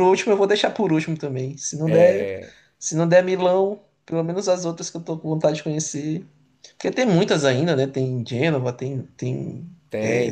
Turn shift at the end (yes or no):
yes